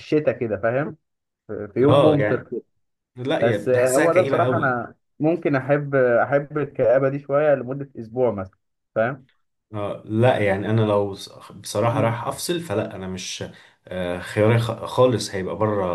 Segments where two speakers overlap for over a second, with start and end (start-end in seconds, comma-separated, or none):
3.4-4.8